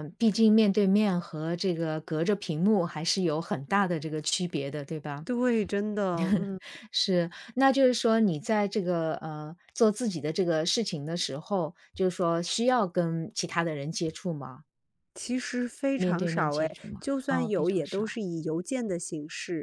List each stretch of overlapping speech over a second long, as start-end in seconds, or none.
15.9-18.2